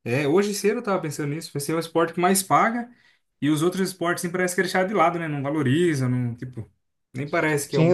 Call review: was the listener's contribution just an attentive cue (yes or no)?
no